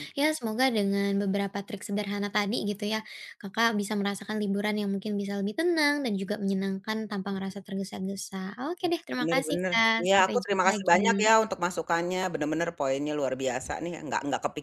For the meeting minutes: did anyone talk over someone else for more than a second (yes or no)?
yes